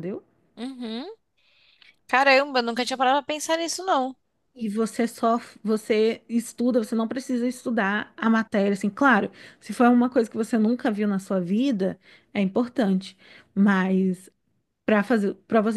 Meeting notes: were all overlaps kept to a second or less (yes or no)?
yes